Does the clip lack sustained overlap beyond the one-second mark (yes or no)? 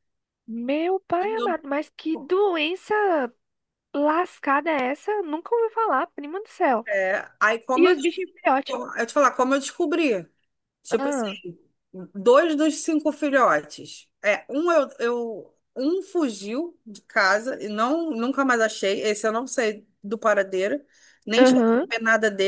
yes